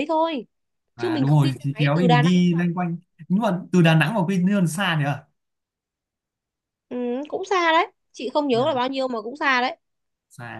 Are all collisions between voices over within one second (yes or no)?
no